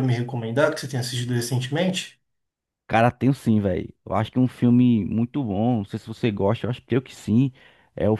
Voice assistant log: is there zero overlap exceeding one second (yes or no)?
yes